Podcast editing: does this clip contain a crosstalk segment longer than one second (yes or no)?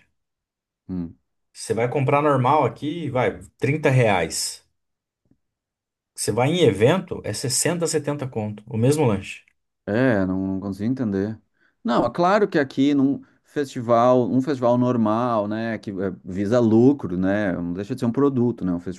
no